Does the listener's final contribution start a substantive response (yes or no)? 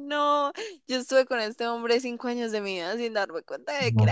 yes